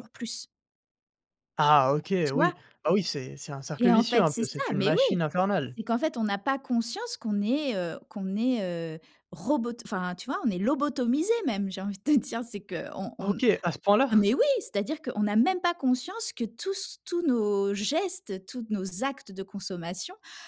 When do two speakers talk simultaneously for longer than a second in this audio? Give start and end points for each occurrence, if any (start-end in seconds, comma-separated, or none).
3.8-5.2